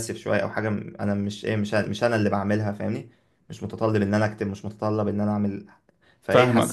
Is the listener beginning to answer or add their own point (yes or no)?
no